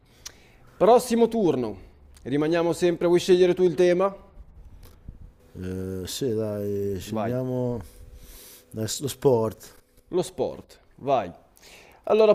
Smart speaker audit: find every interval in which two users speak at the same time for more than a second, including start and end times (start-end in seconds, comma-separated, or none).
none